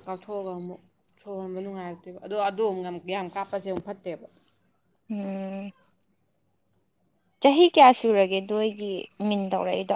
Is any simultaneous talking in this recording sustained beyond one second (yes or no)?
no